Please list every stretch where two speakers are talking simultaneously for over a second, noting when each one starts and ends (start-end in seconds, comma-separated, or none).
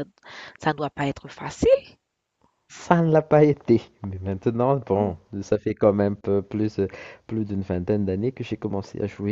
none